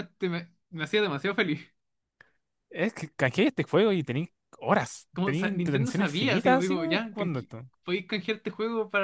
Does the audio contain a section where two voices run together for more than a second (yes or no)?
yes